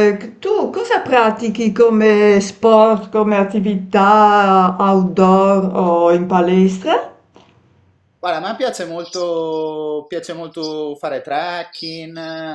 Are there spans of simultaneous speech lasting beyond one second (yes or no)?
no